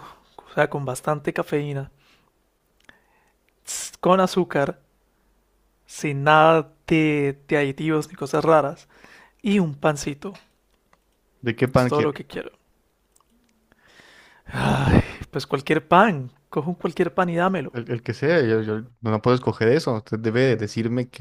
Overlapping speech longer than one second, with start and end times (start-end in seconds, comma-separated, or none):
none